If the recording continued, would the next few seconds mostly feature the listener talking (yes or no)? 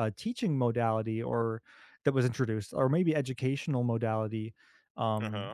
no